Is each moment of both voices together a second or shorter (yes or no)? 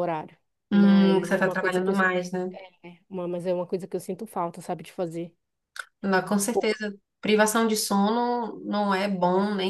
no